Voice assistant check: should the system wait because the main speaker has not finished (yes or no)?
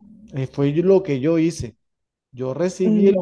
yes